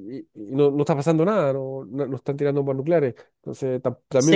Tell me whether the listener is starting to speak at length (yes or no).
yes